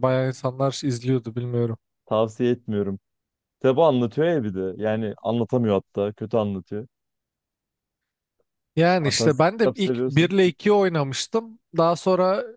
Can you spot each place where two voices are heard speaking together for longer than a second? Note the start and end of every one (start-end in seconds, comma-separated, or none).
9.0-10.3